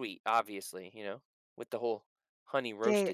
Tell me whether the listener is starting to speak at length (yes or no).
yes